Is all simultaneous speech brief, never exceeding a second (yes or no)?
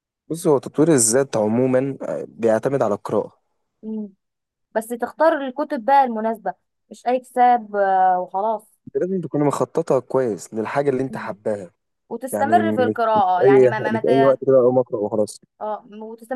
no